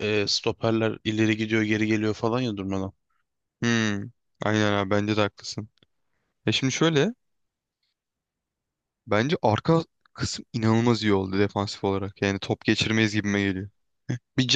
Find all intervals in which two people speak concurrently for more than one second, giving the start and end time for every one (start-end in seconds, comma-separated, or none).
none